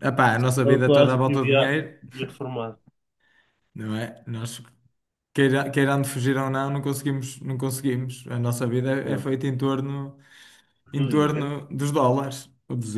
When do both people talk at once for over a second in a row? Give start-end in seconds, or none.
0.6-1.9